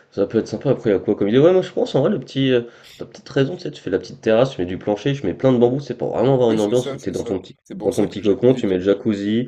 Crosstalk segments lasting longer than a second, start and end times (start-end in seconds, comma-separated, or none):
6.5-8.8